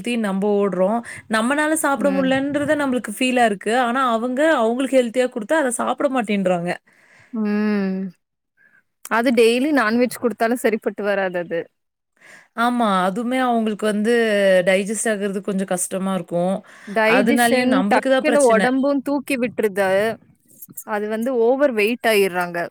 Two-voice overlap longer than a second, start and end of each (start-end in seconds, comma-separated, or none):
17.2-18.7